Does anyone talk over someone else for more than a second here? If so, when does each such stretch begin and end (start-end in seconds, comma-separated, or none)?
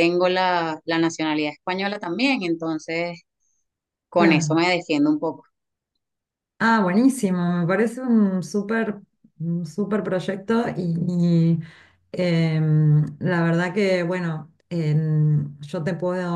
none